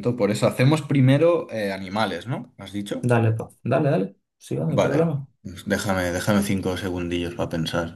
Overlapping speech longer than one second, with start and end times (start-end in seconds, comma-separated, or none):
none